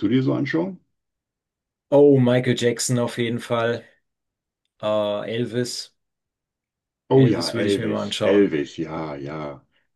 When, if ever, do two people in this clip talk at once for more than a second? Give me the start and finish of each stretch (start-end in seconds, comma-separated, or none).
7.1-8.6